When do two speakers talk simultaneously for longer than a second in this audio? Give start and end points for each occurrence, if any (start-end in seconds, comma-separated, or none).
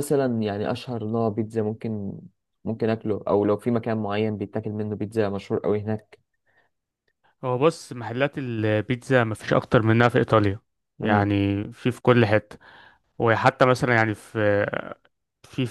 none